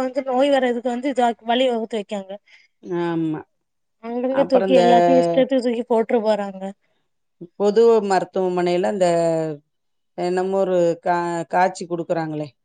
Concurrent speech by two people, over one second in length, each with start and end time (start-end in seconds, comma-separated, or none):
none